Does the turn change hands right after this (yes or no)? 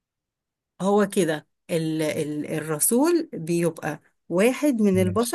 no